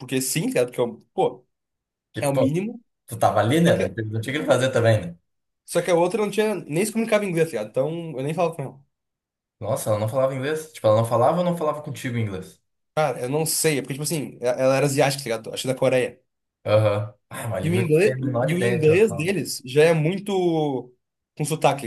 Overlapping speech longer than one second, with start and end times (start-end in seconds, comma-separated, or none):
17.6-19.3